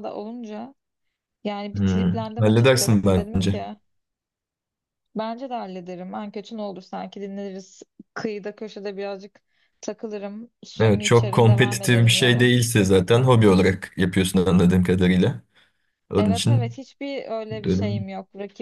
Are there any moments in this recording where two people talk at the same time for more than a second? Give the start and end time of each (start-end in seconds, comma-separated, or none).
1.7-3.6, 10.8-12.5